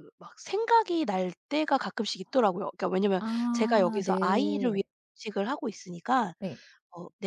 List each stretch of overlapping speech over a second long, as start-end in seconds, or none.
3.2-4.8